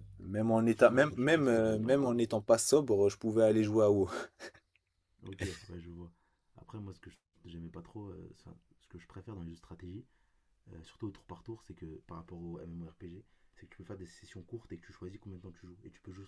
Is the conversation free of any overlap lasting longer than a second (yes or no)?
no